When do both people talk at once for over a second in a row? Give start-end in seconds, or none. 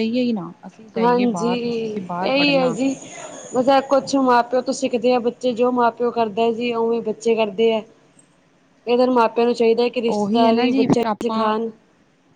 10.2-11.5